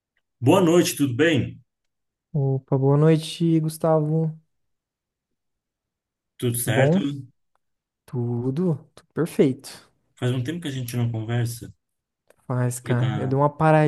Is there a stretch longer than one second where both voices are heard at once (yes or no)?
no